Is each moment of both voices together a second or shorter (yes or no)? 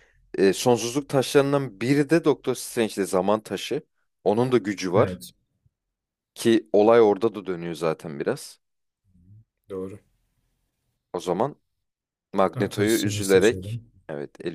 no